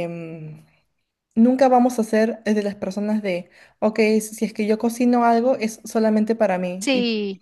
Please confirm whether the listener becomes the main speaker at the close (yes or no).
no